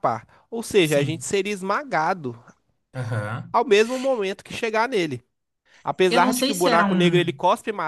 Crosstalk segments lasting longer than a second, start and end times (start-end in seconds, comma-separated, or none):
6.1-7.3